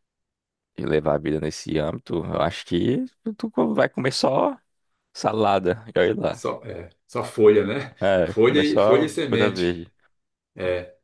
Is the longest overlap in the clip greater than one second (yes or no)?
yes